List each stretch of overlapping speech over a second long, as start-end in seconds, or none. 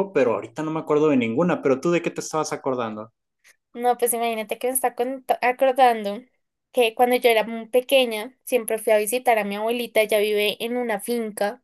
none